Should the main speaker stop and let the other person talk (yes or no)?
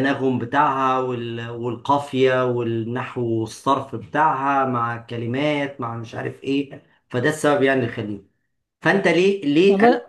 no